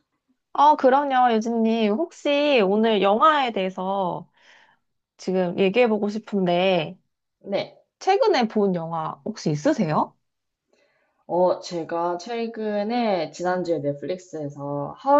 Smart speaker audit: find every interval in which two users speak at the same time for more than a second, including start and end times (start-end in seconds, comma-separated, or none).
none